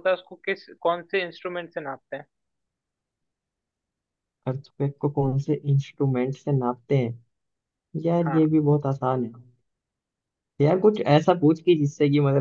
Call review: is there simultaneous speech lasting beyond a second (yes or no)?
no